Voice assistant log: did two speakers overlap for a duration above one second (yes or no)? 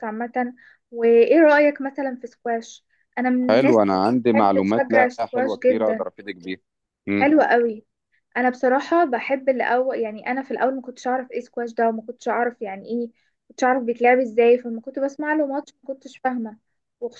yes